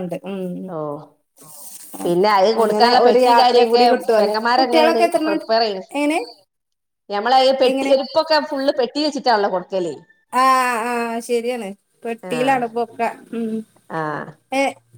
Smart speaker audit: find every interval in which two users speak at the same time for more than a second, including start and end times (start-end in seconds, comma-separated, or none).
2.6-5.5